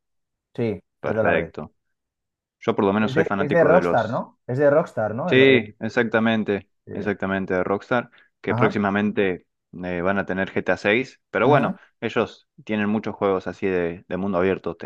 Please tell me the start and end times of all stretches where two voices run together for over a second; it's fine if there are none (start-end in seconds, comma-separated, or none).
3.0-4.2